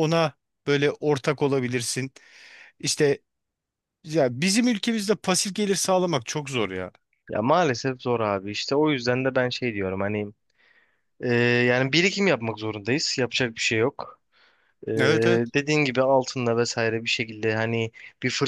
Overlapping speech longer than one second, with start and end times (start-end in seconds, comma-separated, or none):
none